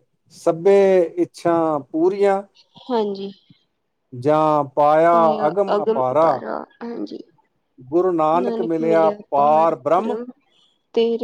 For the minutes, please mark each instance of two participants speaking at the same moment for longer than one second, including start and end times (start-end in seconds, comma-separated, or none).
8.7-10.2